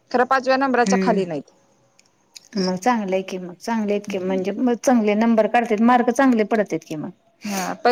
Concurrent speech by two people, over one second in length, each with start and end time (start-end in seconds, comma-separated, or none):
none